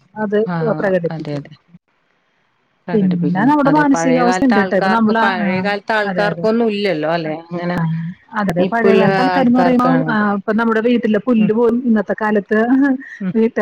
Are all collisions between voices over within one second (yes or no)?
no